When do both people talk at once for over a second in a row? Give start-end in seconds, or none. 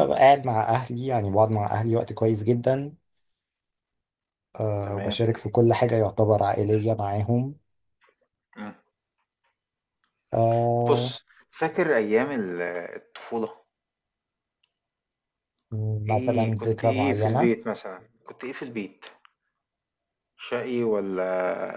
16.1-17.5